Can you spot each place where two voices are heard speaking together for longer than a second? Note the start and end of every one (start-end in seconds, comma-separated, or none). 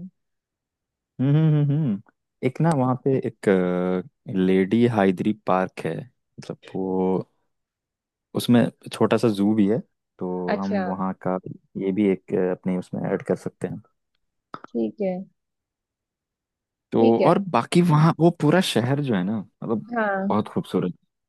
none